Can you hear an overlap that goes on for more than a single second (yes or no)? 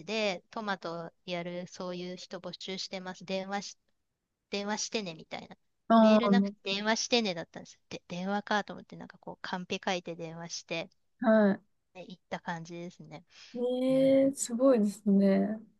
no